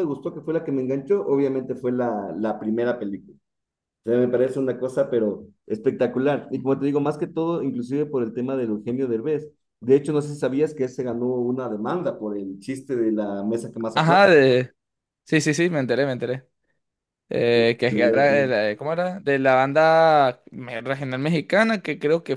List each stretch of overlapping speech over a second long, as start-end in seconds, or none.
none